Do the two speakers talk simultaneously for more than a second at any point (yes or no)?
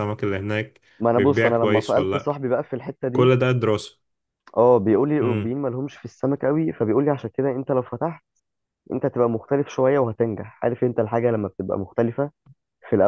yes